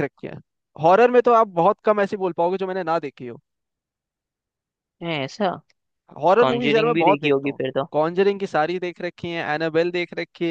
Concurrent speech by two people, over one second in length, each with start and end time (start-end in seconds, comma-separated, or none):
6.4-7.9